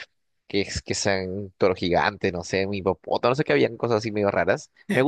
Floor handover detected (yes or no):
no